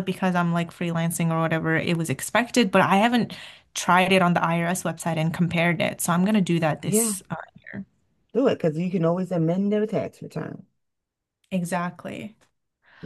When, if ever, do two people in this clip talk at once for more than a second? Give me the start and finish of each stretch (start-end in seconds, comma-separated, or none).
none